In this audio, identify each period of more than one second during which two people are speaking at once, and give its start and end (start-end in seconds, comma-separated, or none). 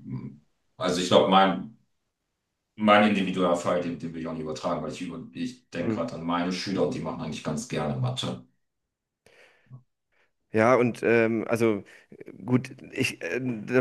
none